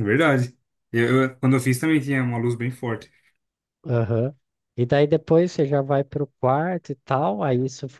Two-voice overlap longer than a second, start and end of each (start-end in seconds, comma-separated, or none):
none